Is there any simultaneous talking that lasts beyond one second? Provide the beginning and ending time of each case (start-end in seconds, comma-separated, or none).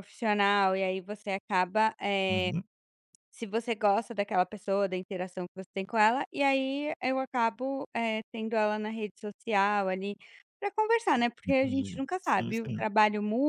11.5-12.8